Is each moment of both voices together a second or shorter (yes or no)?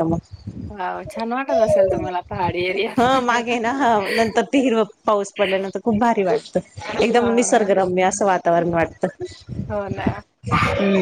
yes